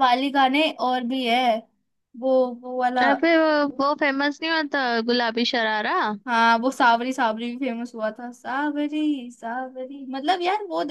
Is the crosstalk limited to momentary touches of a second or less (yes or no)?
yes